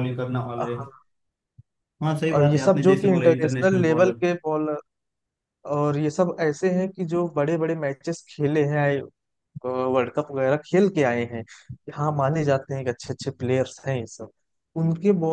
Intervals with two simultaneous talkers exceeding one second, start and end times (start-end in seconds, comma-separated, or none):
2.3-4.2